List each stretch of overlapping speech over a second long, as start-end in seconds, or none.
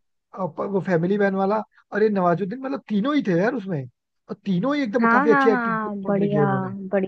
5.0-6.4